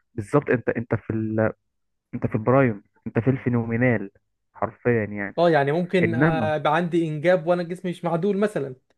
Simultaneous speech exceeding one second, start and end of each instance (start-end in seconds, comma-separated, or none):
none